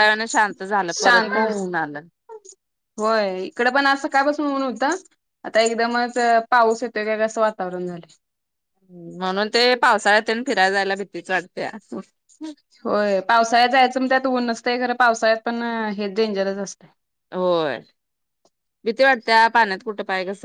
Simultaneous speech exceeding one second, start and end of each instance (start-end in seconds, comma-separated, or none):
none